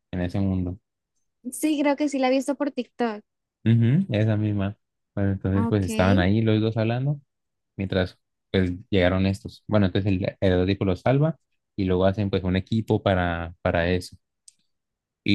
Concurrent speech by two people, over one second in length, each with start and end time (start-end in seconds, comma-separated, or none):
none